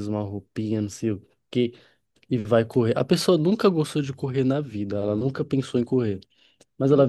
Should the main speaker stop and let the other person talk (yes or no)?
no